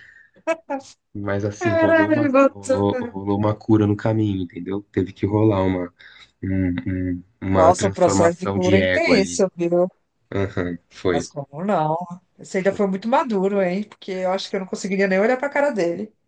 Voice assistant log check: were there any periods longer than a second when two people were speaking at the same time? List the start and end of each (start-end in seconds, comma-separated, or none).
1.6-3.2, 7.5-9.4